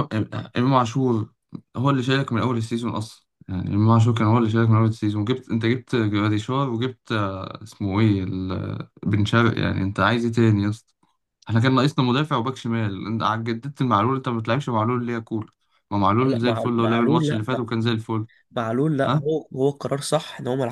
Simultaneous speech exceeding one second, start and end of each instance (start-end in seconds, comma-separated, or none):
16.2-17.6